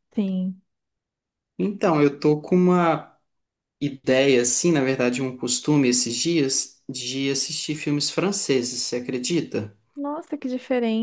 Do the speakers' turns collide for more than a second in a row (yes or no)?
no